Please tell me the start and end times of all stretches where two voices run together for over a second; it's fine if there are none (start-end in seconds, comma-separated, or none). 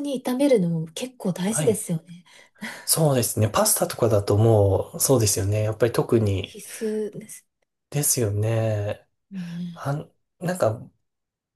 none